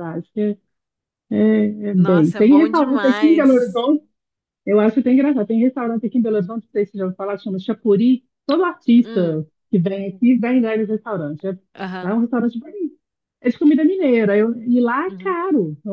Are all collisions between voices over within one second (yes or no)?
no